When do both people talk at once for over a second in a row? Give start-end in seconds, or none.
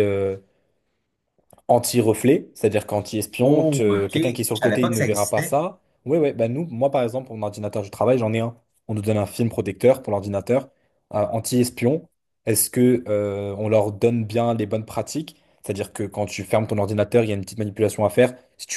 3.4-5.6